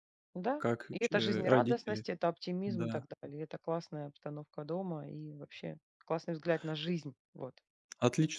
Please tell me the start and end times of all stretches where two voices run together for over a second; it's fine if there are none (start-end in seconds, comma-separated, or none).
0.6-2.0